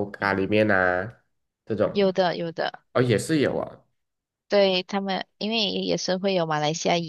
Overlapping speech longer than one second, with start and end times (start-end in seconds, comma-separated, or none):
none